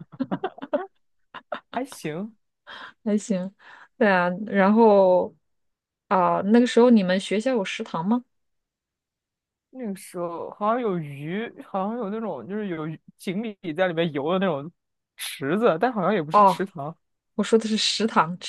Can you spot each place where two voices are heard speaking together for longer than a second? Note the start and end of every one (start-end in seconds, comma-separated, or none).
none